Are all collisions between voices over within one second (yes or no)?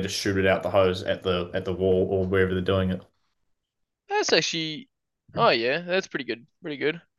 yes